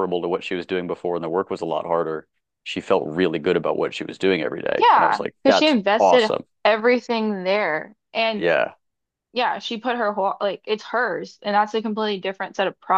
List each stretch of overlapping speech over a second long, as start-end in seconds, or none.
4.8-6.4